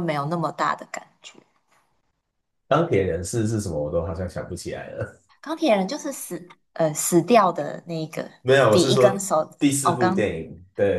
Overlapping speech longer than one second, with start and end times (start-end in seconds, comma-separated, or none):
8.7-10.3